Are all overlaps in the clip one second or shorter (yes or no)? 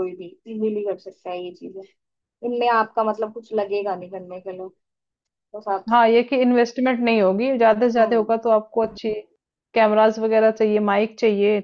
yes